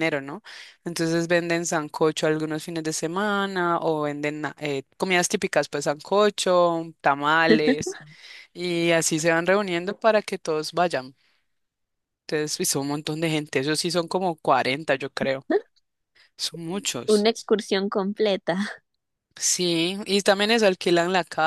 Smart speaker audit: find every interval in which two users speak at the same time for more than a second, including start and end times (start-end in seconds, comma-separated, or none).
none